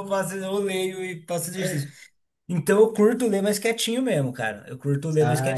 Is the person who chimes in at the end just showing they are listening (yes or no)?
no